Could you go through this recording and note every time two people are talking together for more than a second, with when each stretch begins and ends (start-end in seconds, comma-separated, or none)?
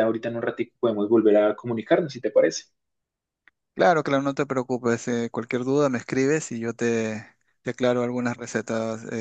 none